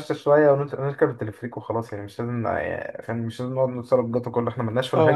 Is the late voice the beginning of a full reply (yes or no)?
yes